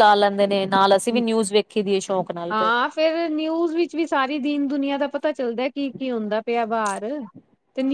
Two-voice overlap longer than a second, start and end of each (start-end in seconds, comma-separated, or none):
none